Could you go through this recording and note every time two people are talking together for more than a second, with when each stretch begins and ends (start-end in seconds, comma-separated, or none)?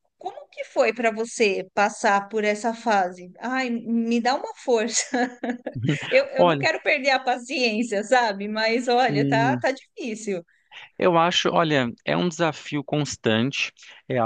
none